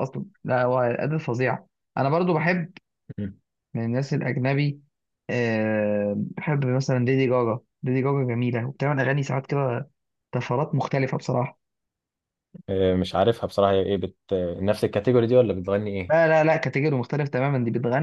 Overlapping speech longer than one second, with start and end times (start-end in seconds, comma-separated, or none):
none